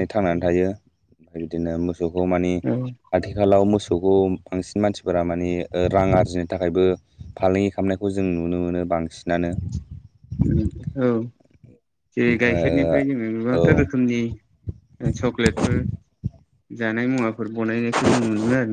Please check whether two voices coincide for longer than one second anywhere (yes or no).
no